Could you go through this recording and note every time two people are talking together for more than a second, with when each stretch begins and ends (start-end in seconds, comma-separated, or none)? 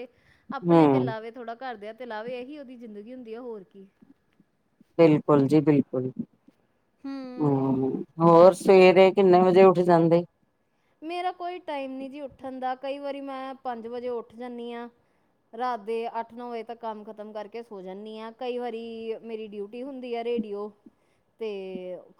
none